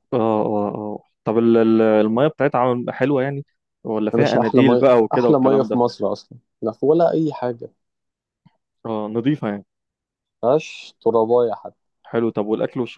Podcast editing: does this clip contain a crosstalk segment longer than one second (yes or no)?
yes